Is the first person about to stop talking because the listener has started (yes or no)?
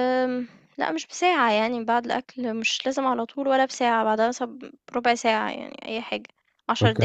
yes